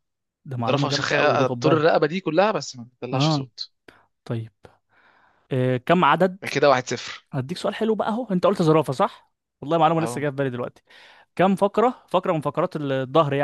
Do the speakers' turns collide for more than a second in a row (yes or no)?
yes